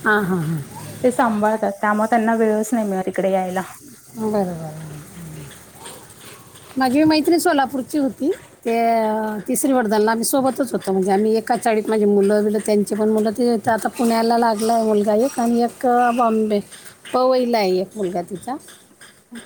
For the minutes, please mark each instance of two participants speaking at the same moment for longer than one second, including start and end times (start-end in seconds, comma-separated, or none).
none